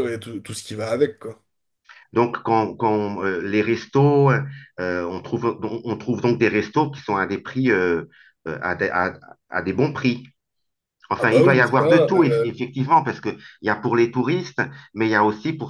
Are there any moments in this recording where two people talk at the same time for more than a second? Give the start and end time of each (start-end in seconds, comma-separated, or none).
11.2-12.5